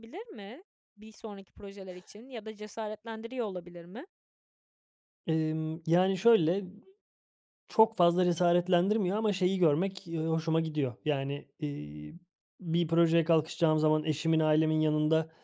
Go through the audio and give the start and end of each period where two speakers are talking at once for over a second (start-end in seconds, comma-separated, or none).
none